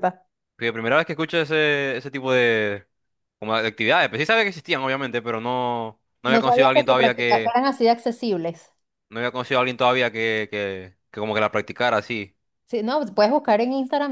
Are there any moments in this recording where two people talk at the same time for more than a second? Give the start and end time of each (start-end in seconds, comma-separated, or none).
6.3-7.5